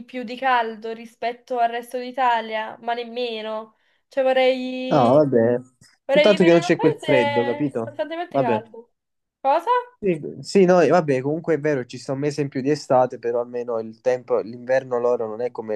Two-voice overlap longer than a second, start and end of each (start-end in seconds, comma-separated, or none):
6.1-8.6